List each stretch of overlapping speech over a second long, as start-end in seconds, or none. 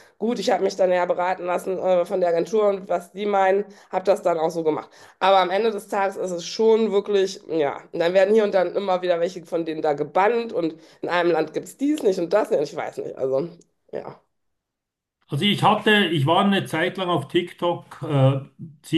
none